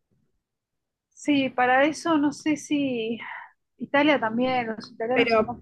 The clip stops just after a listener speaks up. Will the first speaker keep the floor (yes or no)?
no